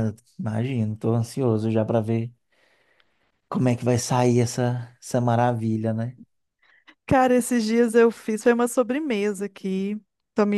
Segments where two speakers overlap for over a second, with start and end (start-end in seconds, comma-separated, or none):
none